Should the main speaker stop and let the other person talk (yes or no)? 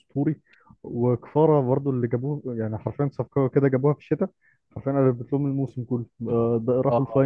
yes